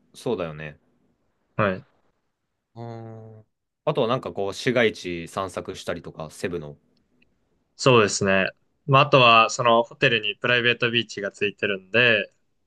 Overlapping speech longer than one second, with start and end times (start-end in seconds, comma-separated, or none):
none